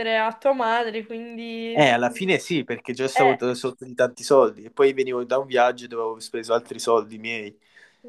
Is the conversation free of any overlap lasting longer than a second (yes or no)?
yes